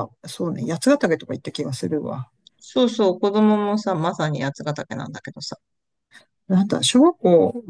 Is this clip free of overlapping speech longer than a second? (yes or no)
yes